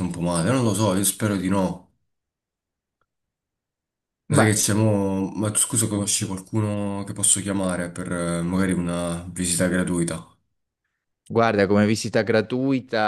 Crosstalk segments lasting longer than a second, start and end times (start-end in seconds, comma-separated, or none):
none